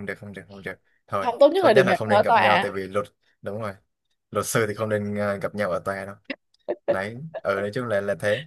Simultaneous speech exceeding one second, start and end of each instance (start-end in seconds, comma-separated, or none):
1.2-2.8